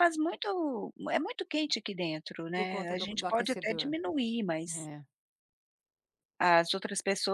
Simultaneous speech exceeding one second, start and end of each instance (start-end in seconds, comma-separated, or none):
2.6-3.9